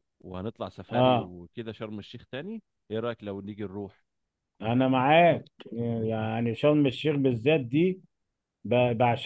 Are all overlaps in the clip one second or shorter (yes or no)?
yes